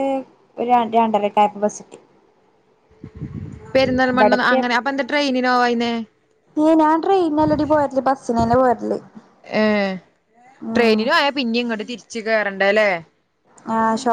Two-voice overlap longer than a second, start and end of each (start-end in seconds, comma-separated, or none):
none